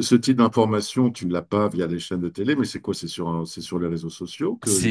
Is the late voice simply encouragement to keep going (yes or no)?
no